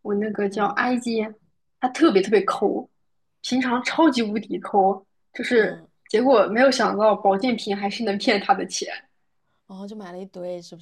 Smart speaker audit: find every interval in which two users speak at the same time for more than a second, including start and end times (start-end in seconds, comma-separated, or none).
none